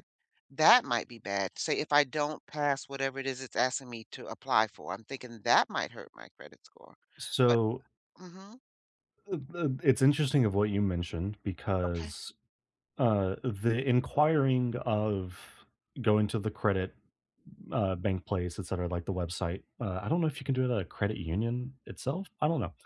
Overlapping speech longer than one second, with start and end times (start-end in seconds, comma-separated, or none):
none